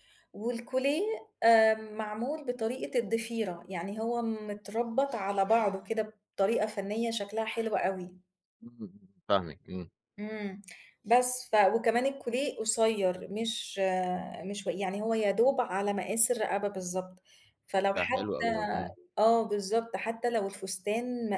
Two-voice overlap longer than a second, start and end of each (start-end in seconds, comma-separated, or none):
none